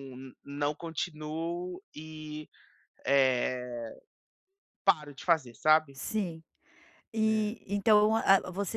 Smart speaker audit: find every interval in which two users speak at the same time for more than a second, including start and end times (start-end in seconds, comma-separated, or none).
none